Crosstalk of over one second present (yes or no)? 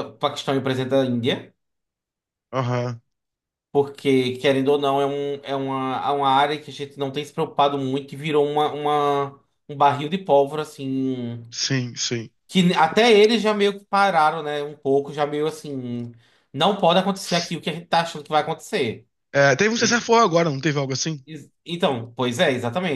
no